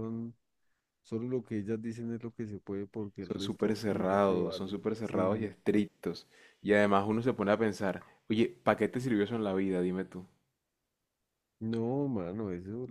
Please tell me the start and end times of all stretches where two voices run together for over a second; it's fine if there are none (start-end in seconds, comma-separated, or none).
3.2-5.5